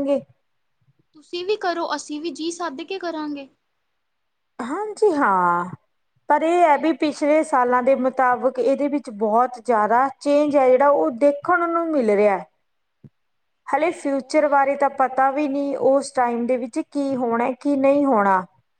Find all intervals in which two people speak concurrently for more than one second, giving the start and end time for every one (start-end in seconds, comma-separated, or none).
13.8-15.4